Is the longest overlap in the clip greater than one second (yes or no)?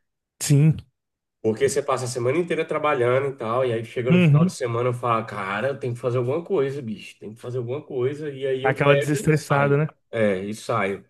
yes